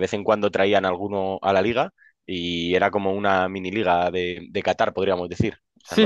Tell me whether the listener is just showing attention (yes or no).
no